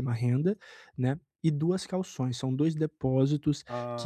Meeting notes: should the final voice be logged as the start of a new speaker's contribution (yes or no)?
no